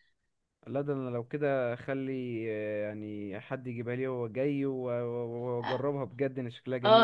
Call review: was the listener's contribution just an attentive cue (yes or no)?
no